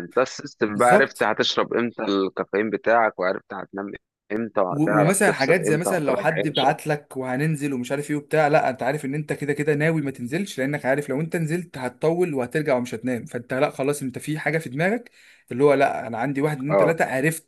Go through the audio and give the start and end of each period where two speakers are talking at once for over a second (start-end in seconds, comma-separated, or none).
4.7-6.7